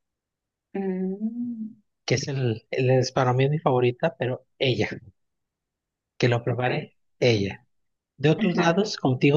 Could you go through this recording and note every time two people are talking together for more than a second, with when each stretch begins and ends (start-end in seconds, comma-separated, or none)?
none